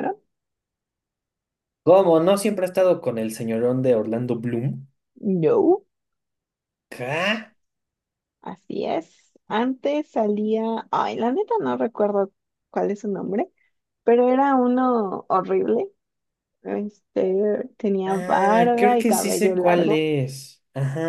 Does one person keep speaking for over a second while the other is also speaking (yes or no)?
yes